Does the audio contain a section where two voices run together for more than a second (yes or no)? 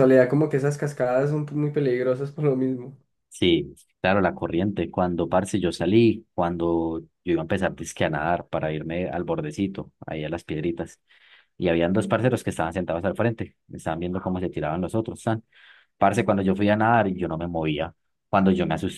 no